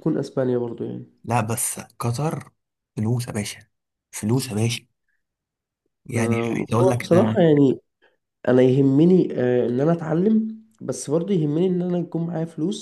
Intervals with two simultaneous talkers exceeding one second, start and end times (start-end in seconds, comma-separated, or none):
6.2-7.4